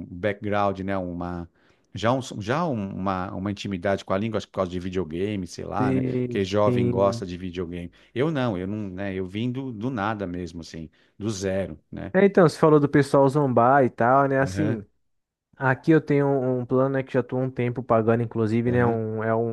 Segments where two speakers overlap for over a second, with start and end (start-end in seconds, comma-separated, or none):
5.8-7.3